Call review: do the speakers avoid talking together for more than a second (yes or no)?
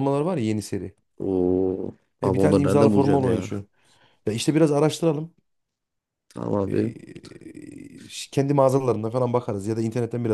no